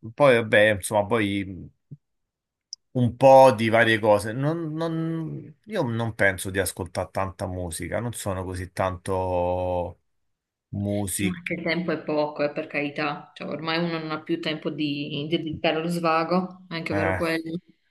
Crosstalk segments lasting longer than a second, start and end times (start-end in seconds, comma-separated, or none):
none